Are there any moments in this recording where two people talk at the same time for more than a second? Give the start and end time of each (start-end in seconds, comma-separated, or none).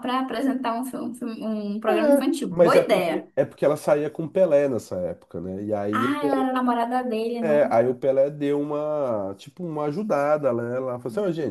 1.9-3.3